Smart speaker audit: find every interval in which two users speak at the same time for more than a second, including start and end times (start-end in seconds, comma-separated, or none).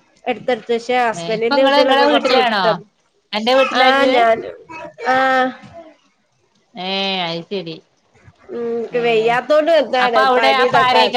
1.2-2.6